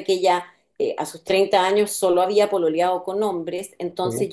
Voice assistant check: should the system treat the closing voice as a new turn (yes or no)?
no